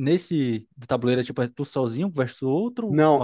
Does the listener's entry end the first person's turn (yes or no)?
yes